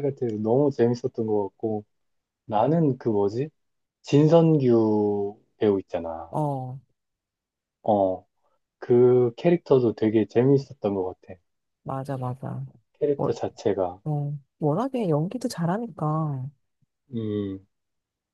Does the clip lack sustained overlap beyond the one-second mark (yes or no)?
yes